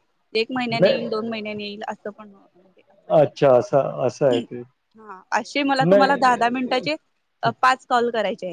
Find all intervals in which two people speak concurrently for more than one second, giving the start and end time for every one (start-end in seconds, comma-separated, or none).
3.2-4.4